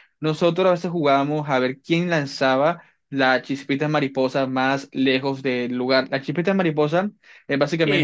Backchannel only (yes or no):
no